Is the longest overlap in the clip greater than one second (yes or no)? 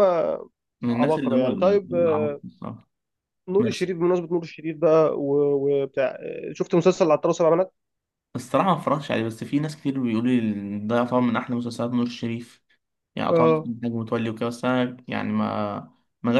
yes